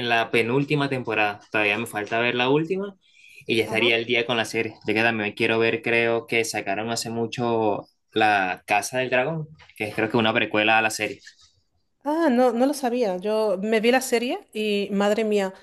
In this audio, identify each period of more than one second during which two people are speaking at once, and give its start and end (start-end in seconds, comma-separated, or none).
none